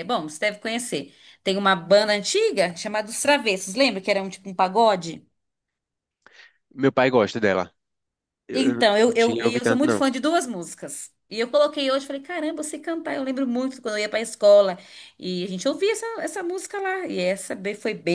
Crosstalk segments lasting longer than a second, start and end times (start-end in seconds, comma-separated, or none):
8.5-10.0